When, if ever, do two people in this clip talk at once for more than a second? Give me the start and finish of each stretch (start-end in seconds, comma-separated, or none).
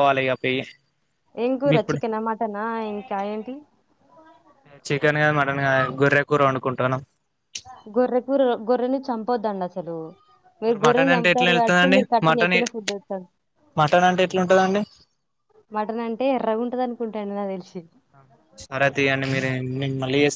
10.7-12.6